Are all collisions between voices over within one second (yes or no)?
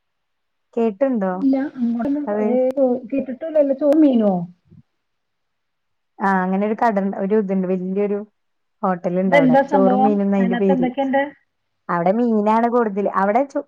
no